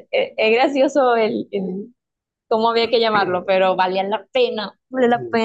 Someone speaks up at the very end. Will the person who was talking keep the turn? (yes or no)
no